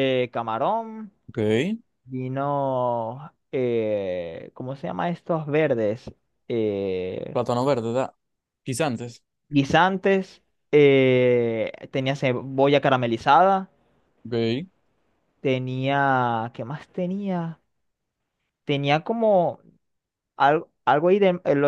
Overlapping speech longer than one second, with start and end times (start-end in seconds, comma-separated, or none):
none